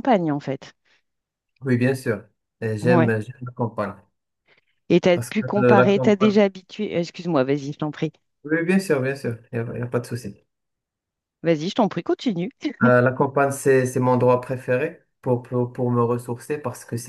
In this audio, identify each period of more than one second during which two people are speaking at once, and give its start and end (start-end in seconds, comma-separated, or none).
5.1-6.4